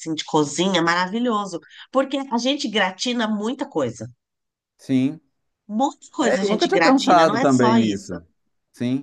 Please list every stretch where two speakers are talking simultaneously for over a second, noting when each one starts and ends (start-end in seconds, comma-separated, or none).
6.2-8.1